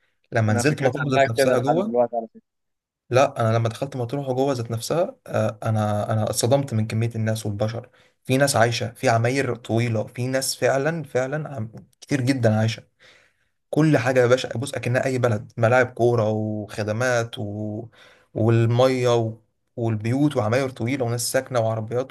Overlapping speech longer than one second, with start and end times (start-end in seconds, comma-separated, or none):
0.5-2.0